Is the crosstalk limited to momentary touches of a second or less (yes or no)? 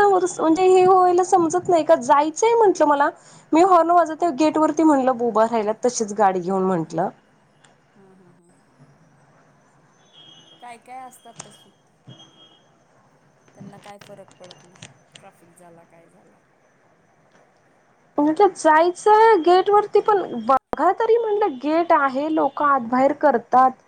yes